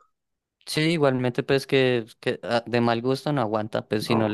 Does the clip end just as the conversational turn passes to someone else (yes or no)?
no